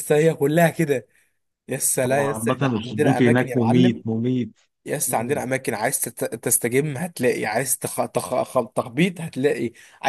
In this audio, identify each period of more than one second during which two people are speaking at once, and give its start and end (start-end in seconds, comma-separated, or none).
2.1-4.0